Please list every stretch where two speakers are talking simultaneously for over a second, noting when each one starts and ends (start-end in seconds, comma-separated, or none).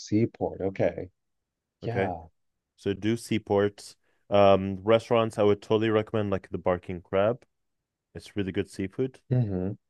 none